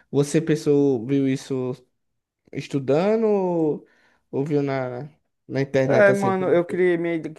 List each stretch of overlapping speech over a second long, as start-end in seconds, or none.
none